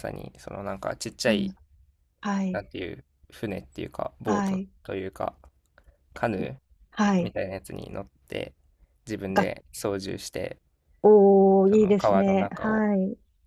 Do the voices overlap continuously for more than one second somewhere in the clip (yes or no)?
yes